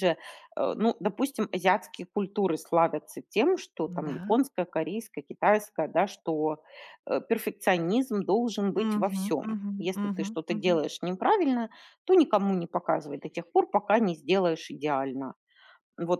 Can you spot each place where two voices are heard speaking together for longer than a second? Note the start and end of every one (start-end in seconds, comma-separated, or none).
8.8-10.8